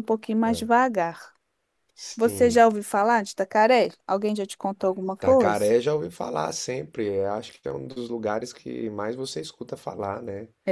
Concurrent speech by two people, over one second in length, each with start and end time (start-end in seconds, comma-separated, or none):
none